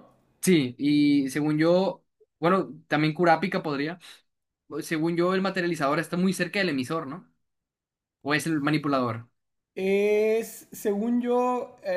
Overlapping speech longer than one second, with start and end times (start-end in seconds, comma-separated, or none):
none